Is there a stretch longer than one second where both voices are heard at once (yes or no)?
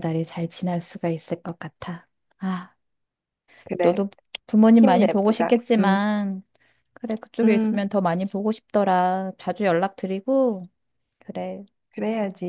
yes